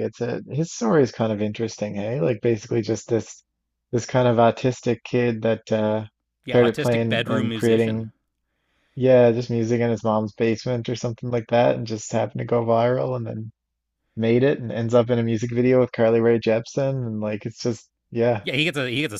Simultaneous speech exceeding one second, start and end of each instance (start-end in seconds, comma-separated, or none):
6.5-8.1